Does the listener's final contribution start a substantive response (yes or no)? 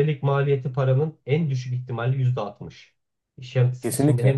no